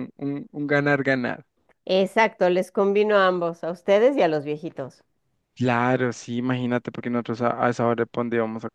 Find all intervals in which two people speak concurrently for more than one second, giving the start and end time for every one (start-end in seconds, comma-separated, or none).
none